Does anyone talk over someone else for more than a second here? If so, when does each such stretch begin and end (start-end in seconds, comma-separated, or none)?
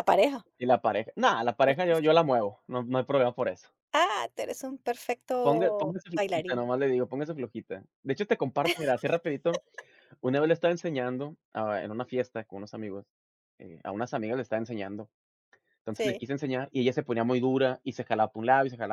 5.4-6.7